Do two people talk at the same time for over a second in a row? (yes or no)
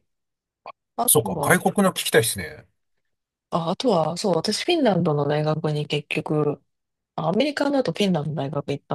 no